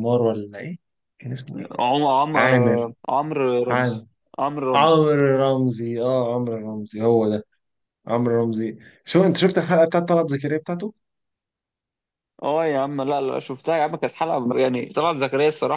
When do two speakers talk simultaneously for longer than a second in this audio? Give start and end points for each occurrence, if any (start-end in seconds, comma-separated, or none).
none